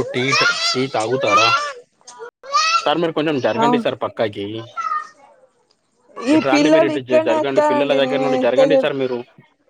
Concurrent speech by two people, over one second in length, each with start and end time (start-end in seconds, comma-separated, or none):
6.3-8.9